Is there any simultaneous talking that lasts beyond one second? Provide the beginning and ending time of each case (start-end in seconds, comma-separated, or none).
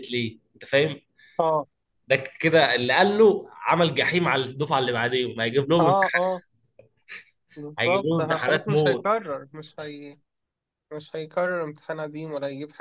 7.8-9.1